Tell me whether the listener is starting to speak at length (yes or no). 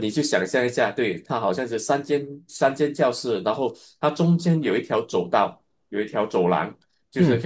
no